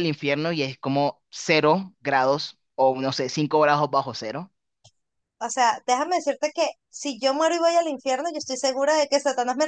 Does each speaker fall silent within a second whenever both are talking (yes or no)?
yes